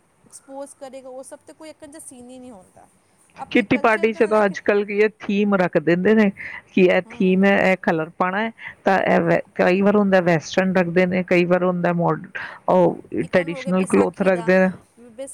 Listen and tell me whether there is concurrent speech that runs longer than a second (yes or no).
yes